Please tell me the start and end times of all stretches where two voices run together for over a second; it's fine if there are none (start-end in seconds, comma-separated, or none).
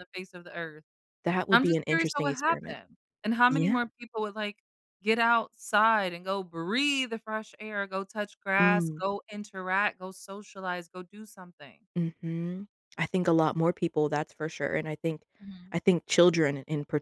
1.5-2.8